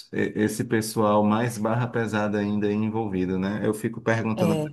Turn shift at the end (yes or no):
no